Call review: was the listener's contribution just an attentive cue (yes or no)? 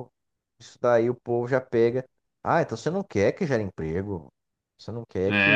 no